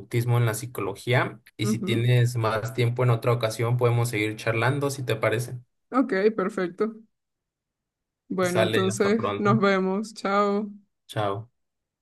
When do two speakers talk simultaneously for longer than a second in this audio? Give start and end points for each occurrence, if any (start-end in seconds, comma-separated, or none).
8.4-9.7